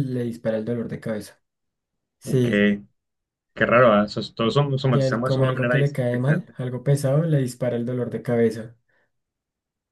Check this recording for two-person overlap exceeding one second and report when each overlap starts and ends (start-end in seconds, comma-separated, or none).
4.9-6.5